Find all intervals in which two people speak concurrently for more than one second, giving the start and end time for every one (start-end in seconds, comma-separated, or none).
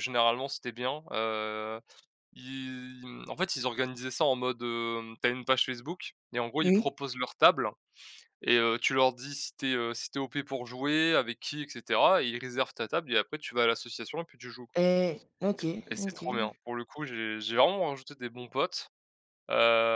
none